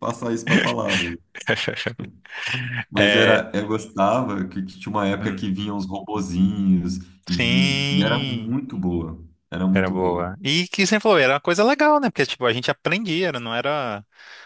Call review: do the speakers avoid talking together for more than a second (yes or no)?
no